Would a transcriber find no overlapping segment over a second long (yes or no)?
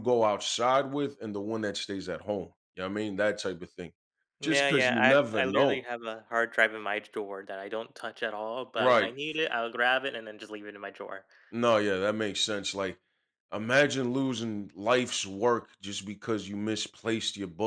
no